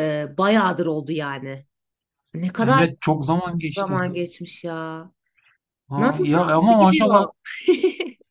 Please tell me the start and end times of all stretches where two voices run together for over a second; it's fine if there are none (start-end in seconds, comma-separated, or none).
6.0-7.2